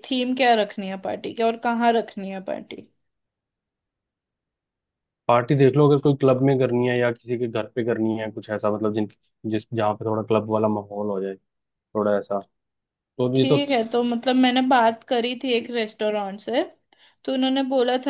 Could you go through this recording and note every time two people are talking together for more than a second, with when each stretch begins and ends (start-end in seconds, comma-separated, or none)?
none